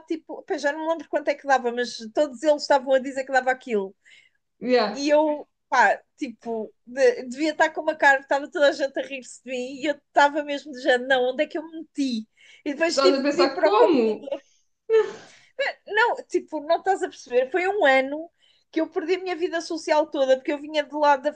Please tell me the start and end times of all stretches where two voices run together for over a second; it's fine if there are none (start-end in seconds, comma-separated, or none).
12.9-14.2